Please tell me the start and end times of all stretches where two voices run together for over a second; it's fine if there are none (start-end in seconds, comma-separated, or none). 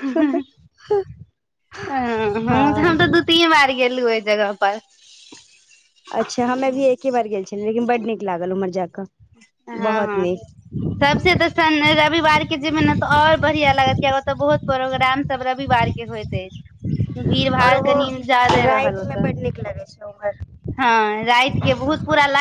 none